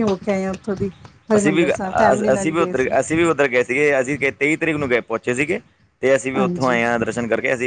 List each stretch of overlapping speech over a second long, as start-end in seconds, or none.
1.4-3.0